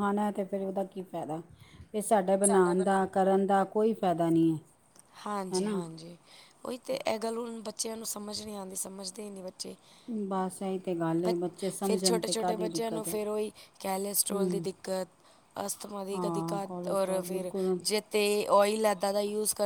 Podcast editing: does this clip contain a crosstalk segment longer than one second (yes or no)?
yes